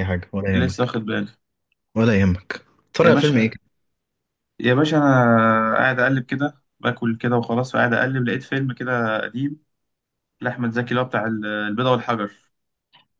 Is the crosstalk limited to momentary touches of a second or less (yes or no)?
yes